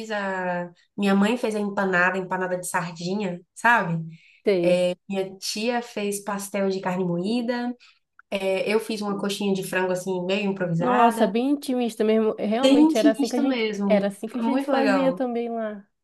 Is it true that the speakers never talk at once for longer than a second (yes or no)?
no